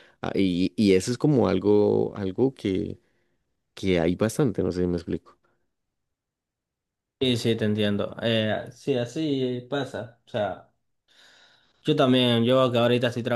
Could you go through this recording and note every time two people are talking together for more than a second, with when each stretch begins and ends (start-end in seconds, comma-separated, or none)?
none